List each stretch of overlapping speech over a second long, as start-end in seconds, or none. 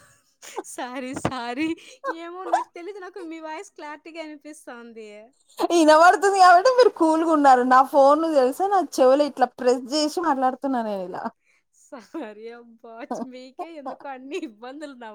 none